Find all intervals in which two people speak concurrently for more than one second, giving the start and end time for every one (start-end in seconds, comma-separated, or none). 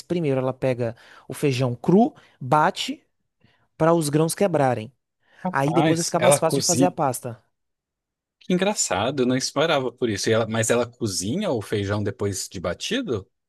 5.5-7.0